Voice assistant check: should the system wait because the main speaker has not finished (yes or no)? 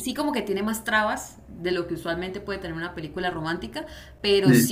yes